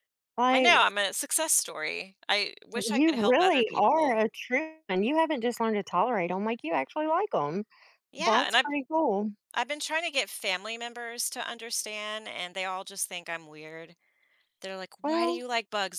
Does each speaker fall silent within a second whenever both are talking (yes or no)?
no